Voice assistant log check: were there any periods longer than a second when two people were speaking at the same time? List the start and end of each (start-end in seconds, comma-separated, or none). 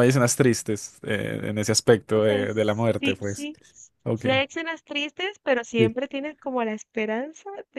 2.1-3.5